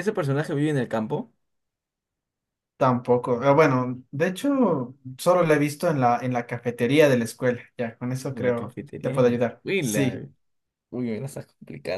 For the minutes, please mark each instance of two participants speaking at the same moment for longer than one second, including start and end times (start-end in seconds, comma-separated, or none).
8.3-10.3